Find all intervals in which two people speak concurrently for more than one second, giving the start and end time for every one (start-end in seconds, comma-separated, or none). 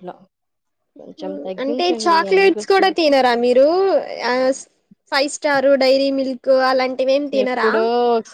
1.2-3.2